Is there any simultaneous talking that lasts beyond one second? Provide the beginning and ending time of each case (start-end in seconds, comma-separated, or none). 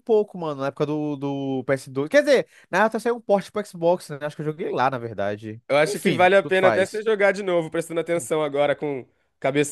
5.7-7.0